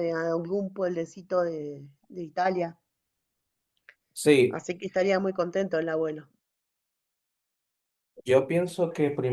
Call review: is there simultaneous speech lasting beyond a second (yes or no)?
no